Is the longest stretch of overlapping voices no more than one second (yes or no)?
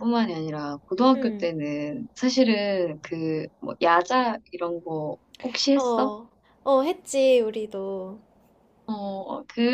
yes